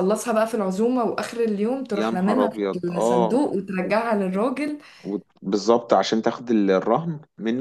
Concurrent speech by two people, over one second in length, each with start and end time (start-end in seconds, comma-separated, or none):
1.9-3.5